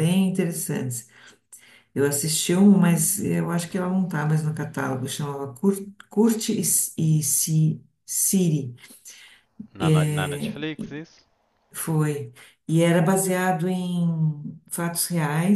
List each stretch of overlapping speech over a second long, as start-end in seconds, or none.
none